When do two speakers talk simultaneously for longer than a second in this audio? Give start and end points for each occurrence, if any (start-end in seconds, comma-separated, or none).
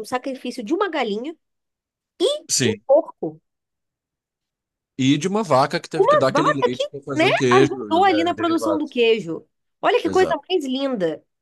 6.0-8.8